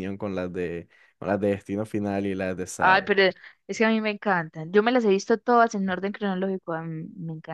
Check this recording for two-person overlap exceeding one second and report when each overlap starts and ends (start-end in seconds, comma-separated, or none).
none